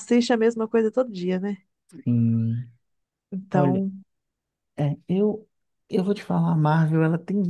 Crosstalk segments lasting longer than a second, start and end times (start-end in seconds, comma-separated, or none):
none